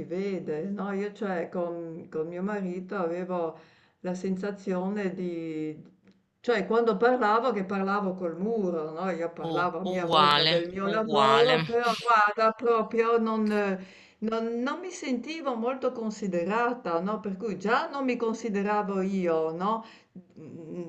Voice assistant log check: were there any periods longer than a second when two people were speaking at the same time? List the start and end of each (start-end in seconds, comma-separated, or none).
9.5-11.6